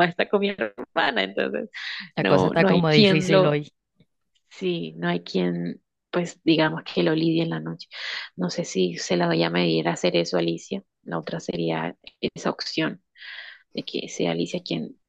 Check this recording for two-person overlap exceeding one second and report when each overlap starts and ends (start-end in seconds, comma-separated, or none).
2.2-3.5